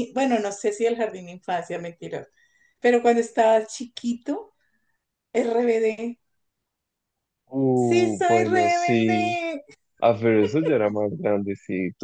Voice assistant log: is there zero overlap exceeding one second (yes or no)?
no